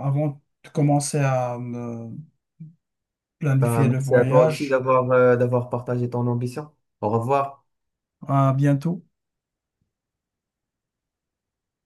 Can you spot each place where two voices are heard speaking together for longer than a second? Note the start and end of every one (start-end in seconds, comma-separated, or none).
3.6-4.8